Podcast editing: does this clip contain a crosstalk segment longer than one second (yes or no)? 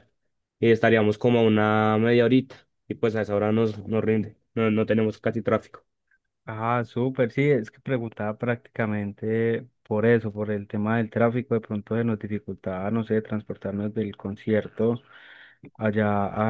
no